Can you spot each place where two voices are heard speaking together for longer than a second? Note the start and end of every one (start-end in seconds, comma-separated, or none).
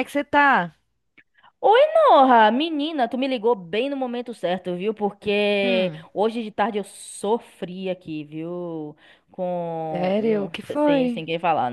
9.9-11.2